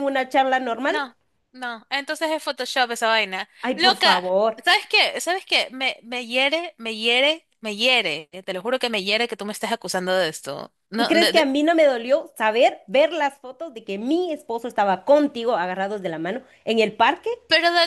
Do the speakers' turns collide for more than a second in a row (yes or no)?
no